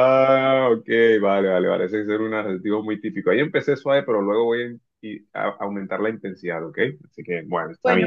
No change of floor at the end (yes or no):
no